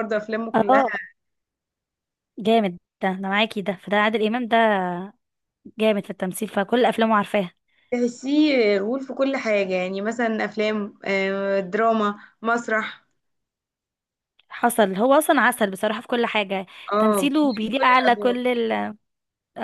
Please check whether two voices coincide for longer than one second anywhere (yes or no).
yes